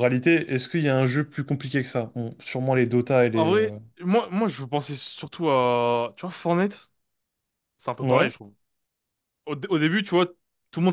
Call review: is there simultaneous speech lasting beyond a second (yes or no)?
no